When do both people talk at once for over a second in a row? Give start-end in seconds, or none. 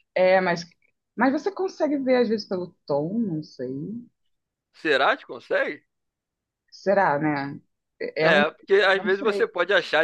8.2-9.5